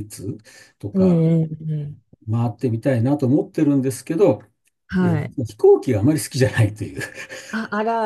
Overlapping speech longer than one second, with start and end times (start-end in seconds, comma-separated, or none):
none